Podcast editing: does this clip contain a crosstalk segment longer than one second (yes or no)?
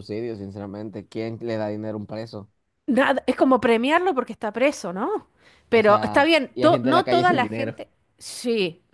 yes